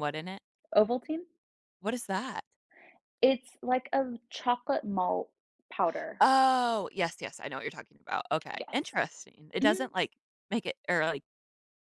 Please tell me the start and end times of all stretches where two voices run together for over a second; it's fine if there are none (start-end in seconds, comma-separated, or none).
none